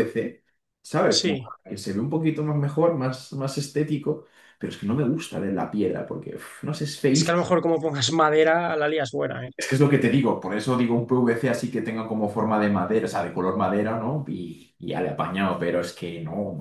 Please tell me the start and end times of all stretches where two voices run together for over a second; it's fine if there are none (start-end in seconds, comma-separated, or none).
none